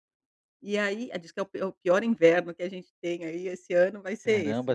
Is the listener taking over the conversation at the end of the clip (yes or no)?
yes